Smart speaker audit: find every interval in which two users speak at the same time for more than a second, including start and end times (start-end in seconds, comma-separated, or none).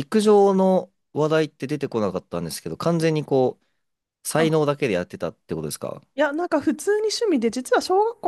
none